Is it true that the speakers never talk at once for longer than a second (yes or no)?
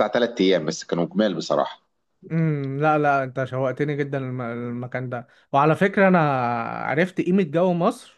yes